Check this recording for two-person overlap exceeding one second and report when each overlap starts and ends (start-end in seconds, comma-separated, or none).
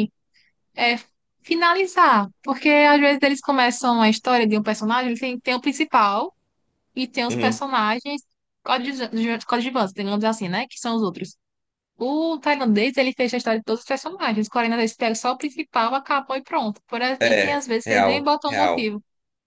17.2-18.9